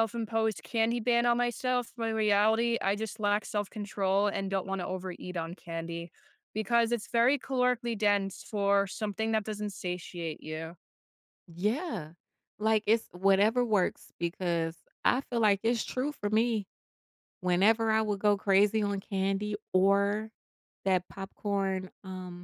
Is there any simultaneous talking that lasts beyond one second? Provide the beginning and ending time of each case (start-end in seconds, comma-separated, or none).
none